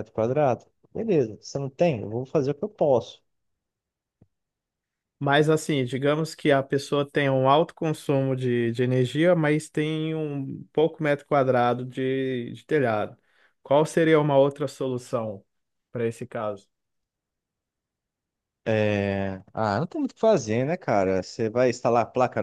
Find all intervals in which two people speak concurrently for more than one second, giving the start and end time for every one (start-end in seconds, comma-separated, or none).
none